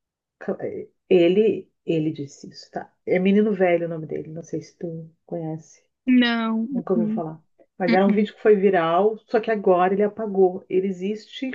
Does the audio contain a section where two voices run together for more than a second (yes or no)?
no